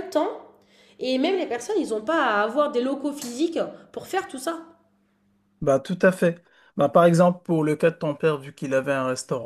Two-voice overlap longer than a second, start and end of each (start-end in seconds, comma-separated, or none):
none